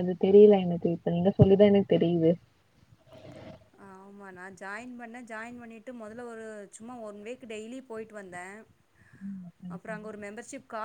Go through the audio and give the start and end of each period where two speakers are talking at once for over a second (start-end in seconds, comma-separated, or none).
none